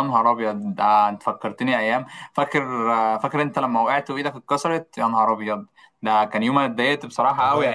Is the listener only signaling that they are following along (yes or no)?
yes